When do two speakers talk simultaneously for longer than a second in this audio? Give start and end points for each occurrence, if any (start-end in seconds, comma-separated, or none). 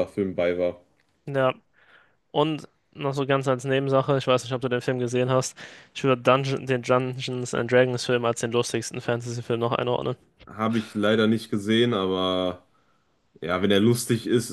none